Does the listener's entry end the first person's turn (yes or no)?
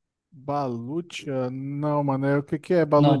yes